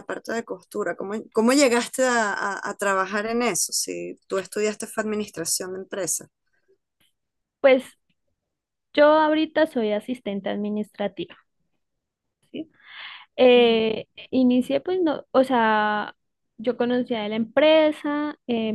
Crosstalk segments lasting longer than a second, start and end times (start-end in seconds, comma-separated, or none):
none